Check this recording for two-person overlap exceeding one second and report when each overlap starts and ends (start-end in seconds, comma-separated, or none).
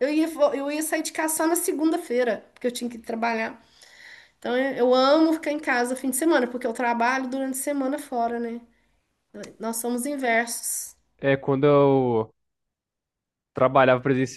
none